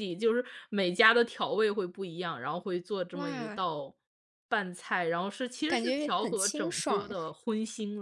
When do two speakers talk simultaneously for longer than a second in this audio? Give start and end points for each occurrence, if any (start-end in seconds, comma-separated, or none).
5.7-7.1